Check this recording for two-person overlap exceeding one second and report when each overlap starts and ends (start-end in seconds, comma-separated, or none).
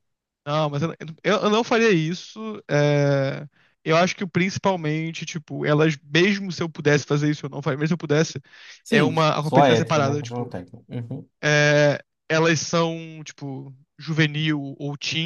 8.9-10.6